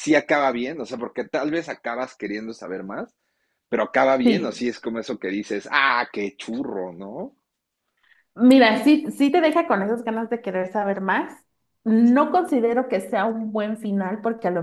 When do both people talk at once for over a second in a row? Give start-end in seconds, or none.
none